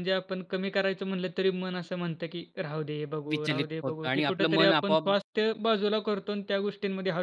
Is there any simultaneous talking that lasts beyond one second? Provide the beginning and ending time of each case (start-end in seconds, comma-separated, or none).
3.3-5.1